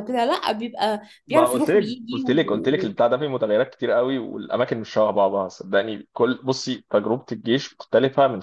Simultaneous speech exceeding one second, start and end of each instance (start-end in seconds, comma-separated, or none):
1.3-3.0